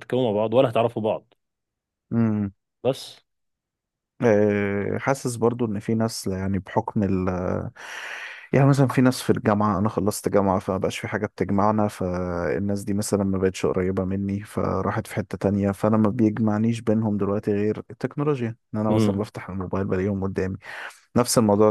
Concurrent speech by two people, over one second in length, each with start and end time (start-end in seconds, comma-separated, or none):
none